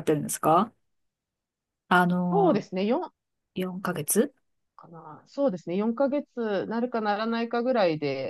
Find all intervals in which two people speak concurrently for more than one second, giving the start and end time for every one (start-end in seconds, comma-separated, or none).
none